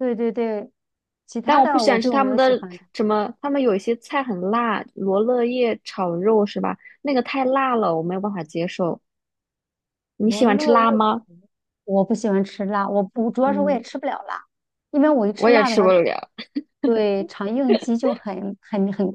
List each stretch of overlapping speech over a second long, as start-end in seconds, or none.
1.4-2.8